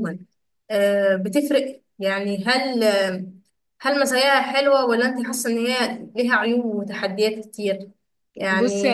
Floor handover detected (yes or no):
no